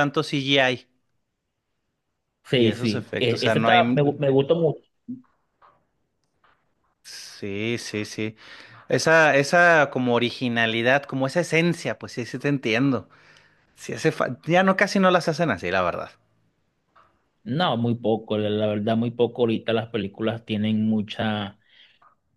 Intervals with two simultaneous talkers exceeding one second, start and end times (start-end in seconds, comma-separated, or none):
2.5-4.2